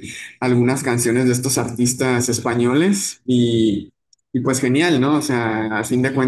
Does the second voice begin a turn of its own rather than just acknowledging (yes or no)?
yes